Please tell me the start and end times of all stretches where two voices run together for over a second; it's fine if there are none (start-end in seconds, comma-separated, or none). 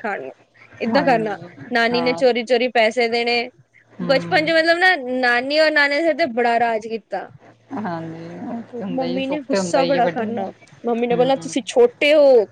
9.0-10.4